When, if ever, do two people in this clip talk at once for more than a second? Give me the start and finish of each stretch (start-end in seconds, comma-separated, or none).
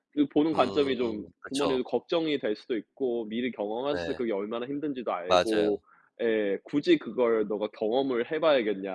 0.5-1.8